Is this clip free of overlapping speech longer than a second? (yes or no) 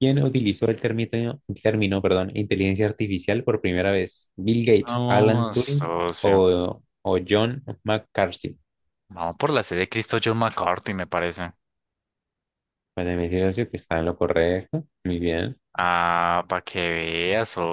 no